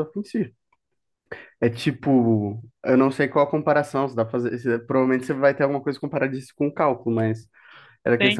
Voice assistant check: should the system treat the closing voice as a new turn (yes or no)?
no